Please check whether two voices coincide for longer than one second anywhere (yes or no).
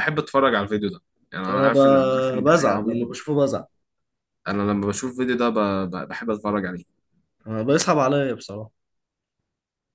yes